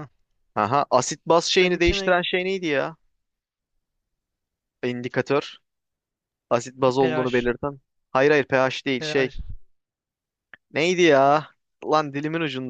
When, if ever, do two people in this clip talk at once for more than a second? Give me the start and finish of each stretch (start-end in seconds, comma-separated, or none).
none